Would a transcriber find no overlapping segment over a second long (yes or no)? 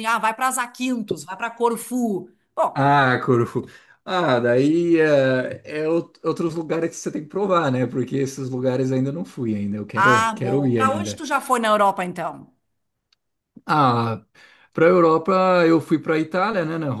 no